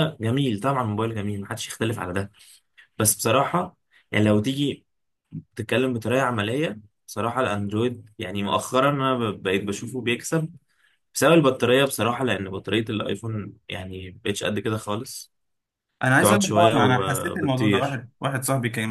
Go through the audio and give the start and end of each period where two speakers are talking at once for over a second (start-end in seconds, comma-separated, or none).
16.2-18.0